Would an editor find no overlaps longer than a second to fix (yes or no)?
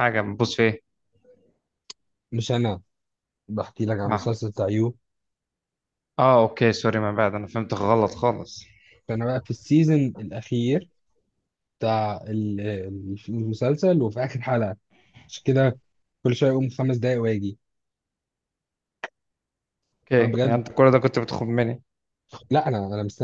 yes